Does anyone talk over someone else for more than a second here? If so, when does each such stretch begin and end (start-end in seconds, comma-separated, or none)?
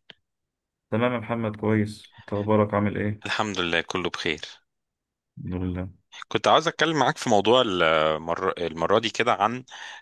none